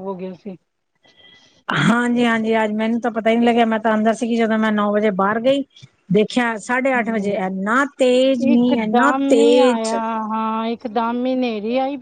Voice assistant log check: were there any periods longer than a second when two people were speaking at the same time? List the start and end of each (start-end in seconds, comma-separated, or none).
8.5-9.9